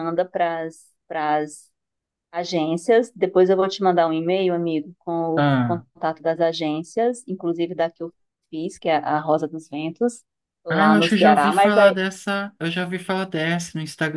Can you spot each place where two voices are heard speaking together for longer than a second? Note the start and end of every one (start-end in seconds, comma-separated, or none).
10.7-12.0